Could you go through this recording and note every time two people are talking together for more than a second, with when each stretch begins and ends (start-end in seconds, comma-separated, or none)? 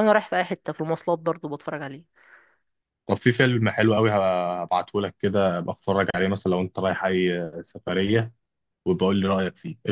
none